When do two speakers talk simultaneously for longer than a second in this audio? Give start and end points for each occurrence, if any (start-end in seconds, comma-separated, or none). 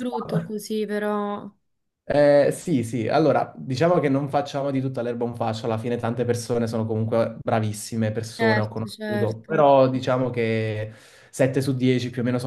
8.4-9.7